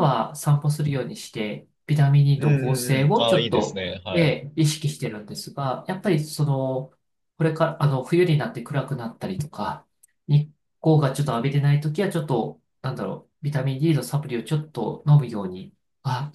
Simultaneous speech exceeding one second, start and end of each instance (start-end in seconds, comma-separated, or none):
2.4-4.4